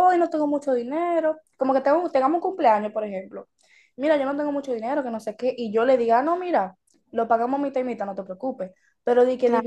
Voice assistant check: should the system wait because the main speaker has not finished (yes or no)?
yes